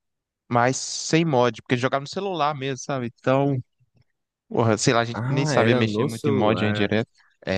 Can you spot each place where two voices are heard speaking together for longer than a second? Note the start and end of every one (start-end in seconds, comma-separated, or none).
5.1-6.9